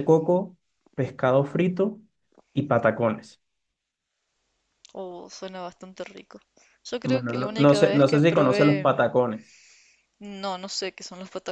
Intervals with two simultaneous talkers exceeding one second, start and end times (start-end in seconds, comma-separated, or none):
7.0-8.9